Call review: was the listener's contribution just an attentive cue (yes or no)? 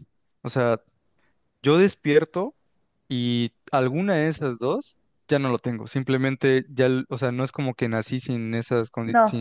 yes